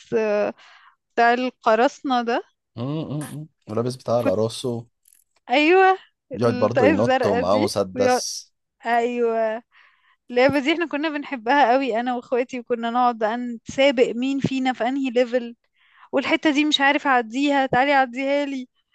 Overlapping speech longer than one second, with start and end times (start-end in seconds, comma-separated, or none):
6.3-8.2